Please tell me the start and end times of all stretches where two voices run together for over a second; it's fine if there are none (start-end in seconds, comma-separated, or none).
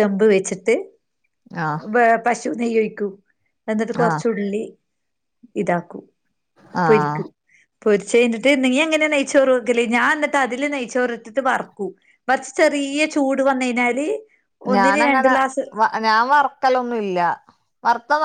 none